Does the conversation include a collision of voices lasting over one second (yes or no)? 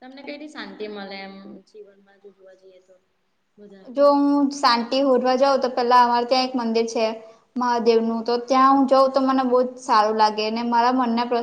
no